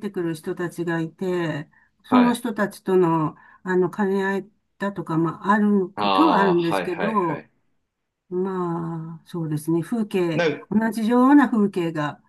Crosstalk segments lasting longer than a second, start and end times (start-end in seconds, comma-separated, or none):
5.9-7.5